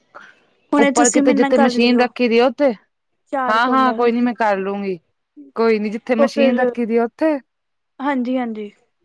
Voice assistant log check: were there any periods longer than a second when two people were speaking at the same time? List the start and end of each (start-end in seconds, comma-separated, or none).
0.8-2.1